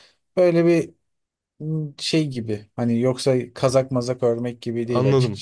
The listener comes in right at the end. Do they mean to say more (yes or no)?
yes